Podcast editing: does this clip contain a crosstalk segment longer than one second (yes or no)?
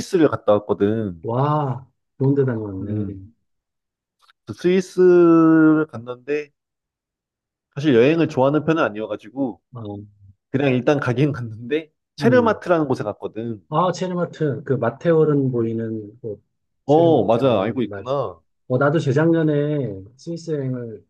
yes